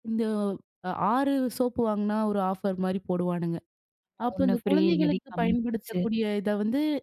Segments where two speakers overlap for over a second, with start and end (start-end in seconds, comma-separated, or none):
4.3-6.0